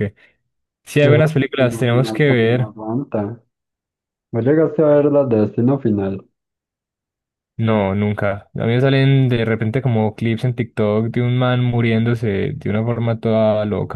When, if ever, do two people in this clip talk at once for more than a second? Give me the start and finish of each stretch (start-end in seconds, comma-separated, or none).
1.0-2.7